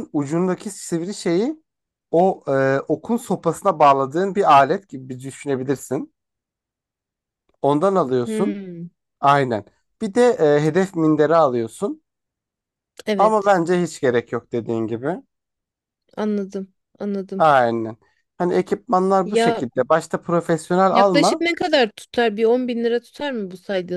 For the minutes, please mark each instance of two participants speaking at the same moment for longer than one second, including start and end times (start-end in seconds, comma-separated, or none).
none